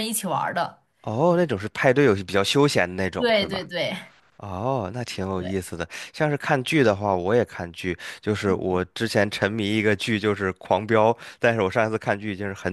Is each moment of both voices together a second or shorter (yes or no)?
yes